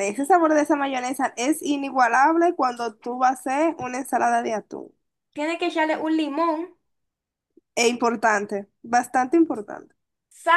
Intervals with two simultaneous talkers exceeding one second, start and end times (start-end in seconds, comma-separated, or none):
none